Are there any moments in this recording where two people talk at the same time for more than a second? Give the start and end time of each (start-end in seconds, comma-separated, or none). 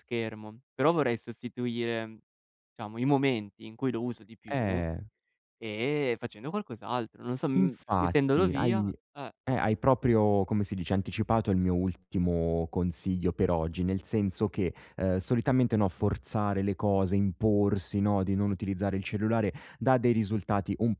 7.6-8.9